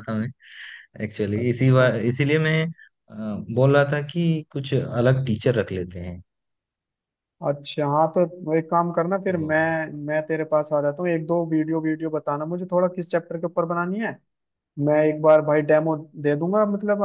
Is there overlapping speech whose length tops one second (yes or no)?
no